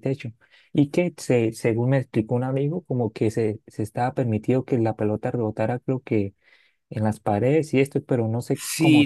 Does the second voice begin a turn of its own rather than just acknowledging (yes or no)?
yes